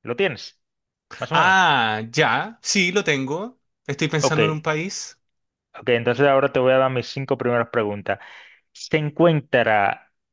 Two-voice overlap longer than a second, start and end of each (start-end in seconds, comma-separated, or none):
none